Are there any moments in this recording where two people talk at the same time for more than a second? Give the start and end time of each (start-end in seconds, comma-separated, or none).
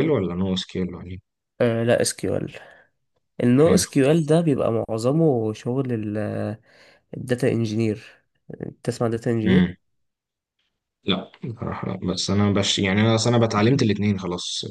none